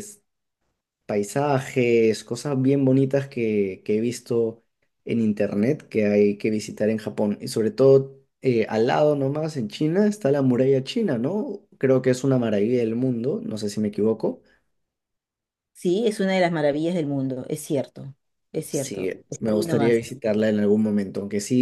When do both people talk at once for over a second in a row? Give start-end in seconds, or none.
18.7-20.0